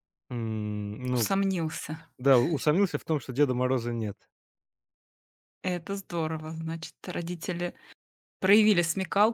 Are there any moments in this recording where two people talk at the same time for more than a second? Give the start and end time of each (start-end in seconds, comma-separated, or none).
none